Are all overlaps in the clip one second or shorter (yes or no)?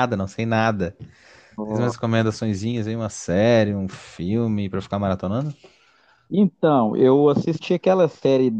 yes